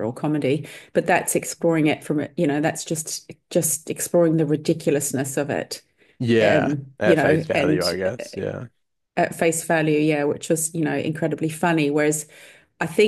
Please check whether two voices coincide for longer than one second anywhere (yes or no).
yes